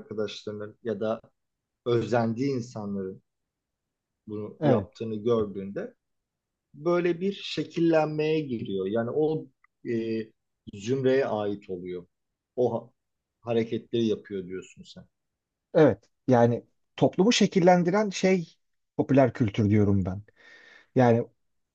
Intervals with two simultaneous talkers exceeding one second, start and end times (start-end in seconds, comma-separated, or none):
none